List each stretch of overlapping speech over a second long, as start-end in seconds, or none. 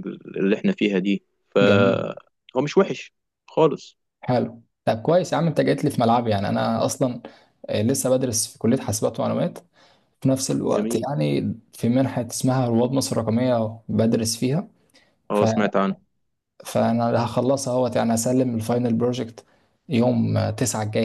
none